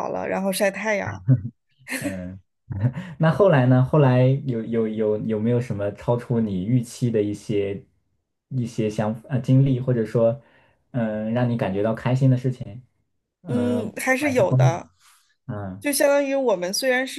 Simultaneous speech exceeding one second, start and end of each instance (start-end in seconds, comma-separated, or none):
13.4-14.8